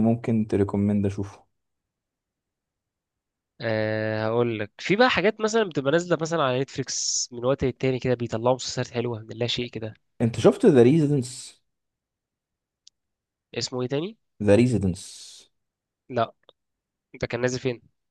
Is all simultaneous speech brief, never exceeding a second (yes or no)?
yes